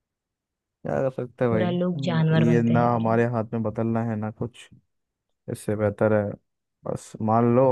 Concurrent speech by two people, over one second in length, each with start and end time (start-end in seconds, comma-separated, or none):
1.5-3.3